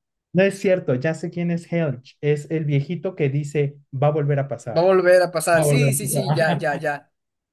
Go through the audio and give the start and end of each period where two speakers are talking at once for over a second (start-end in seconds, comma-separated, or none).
5.5-6.8